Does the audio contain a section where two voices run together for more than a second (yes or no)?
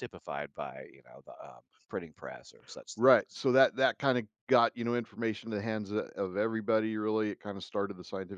no